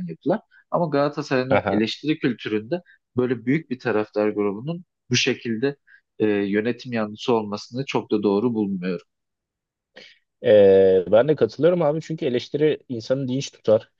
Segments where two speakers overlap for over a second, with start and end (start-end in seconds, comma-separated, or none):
none